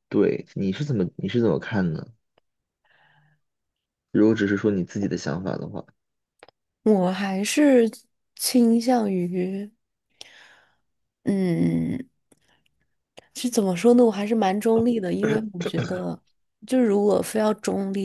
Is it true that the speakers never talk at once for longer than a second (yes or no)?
yes